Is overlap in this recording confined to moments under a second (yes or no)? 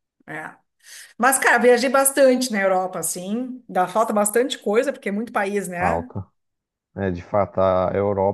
yes